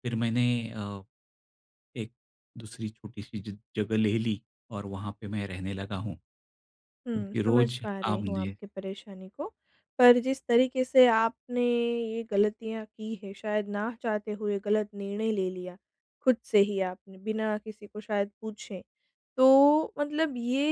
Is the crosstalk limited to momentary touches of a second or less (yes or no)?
no